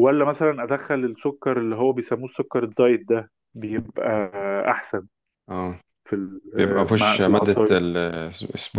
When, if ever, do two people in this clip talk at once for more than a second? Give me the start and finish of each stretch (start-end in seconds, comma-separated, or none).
6.6-7.8